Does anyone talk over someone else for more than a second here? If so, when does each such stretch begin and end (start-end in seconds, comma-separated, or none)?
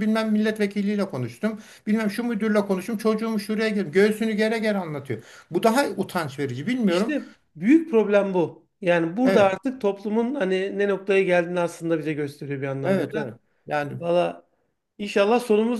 none